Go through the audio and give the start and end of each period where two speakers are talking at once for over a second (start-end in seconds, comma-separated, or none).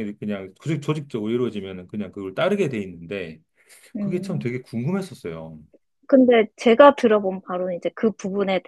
none